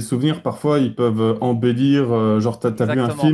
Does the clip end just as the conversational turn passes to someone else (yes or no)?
no